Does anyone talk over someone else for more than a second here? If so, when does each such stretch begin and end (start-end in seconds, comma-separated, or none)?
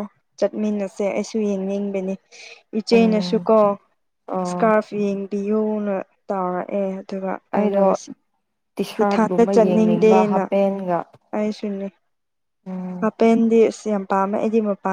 9.0-10.4